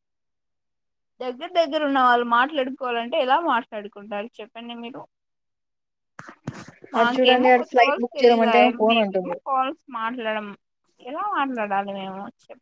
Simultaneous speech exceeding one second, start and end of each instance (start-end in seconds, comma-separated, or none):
7.0-9.4